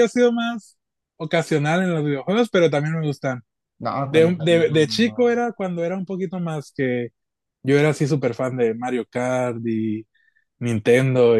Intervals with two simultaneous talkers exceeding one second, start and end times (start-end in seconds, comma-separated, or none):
4.1-5.4